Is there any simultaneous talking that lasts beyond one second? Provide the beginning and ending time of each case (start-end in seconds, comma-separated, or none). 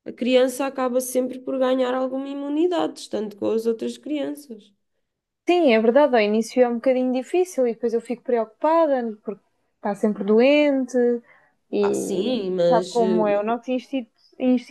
11.8-13.6